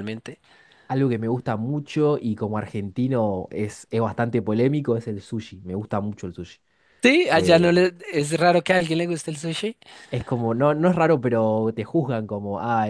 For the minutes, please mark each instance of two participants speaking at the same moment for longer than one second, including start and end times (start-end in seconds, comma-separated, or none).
none